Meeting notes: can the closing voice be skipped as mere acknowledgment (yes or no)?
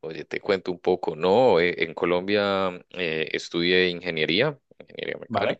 yes